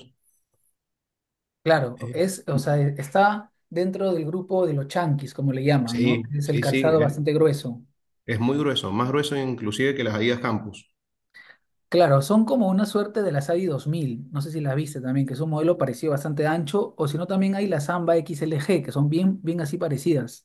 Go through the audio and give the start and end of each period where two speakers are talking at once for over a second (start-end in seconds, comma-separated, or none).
5.8-7.2